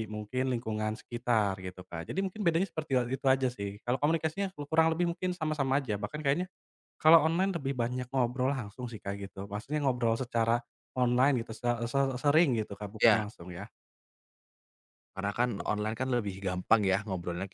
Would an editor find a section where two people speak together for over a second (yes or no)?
no